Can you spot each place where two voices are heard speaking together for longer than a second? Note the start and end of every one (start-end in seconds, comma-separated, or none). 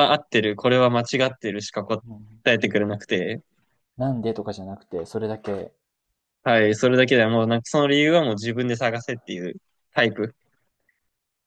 none